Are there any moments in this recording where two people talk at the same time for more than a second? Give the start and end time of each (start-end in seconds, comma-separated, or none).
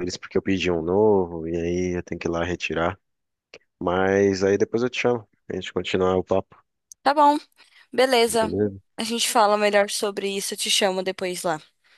none